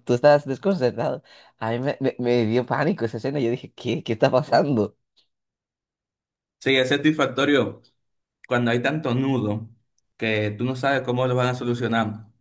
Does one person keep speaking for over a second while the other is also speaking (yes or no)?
no